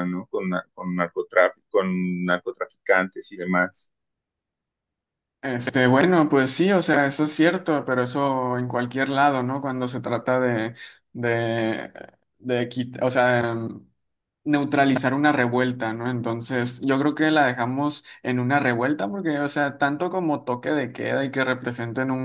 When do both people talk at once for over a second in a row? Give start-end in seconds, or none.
none